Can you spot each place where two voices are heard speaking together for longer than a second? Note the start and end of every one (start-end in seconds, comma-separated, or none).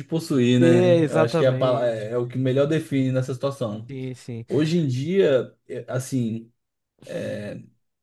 0.6-2.1